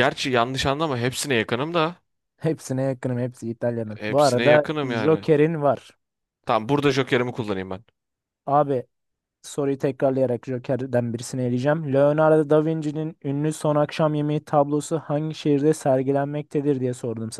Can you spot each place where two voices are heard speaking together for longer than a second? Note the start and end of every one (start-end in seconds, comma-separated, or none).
4.0-5.3